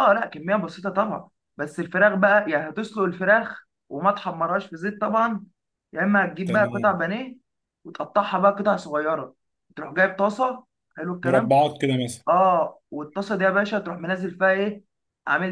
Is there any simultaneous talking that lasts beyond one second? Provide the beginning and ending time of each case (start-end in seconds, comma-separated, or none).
none